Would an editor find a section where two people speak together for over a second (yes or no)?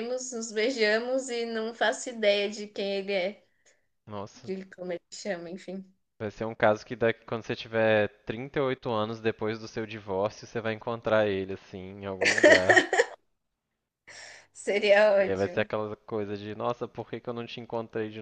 no